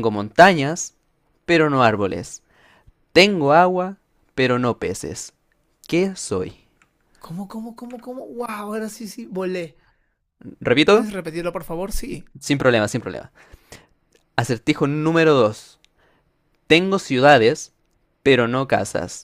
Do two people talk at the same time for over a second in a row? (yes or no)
no